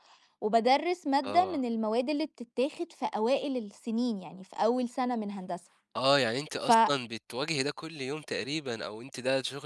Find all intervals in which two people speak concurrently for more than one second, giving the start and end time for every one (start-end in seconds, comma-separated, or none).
none